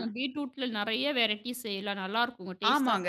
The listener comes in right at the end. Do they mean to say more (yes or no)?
yes